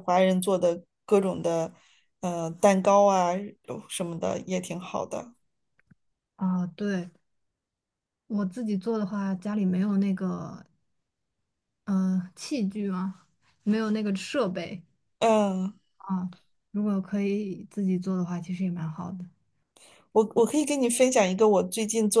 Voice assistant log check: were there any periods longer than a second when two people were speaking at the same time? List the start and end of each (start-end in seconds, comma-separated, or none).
none